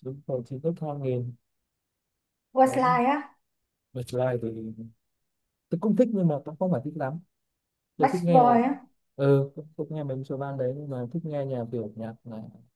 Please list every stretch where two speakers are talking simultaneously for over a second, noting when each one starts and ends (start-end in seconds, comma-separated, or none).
none